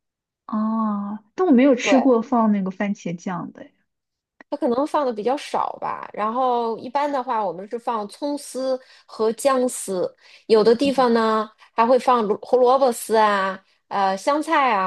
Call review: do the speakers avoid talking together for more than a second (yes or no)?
yes